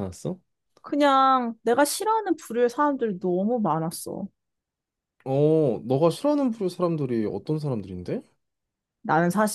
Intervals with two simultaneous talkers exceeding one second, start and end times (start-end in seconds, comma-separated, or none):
none